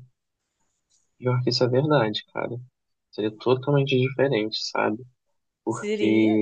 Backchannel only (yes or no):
yes